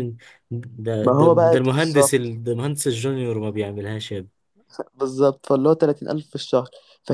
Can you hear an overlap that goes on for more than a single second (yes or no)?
yes